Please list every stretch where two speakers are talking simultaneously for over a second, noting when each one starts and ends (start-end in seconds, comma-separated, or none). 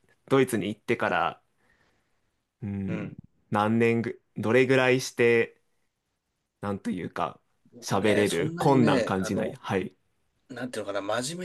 7.8-9.6